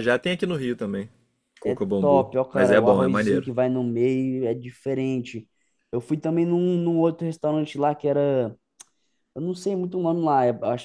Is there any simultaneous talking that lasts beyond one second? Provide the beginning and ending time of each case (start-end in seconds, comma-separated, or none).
1.6-3.5